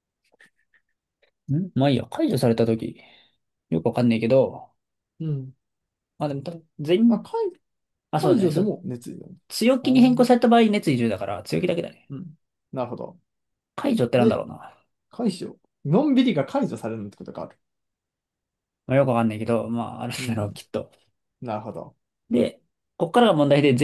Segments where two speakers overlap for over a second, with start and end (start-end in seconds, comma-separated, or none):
none